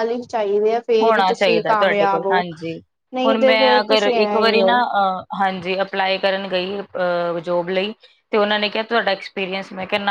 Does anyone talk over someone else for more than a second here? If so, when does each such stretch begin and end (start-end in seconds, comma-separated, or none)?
3.2-4.7